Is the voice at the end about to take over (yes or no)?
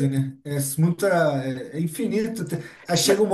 no